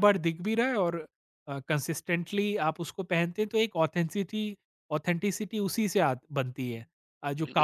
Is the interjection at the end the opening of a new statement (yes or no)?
yes